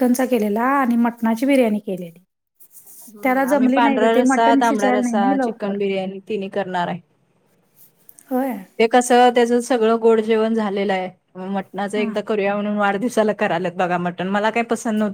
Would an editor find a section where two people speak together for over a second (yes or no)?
yes